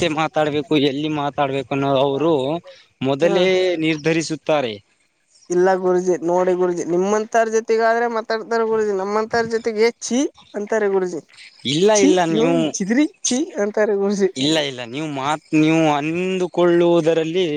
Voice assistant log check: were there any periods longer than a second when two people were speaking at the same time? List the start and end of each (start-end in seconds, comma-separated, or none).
none